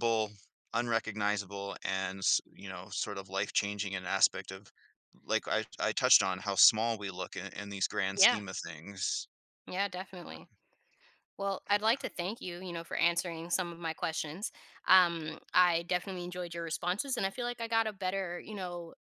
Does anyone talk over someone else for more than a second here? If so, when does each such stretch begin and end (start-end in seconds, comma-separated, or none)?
none